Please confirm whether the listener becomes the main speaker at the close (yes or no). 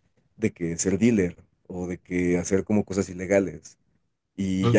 no